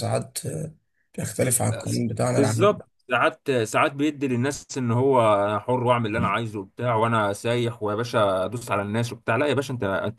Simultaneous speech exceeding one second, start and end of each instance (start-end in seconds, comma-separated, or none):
none